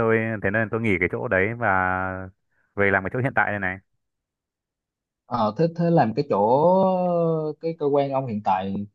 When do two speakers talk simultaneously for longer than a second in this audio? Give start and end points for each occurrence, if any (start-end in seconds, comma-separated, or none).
none